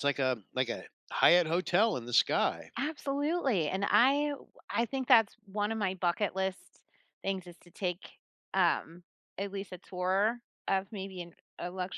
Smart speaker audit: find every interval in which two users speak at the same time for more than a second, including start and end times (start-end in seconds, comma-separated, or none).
none